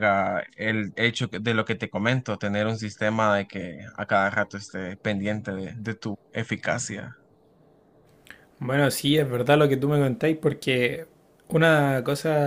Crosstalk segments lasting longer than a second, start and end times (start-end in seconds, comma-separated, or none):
none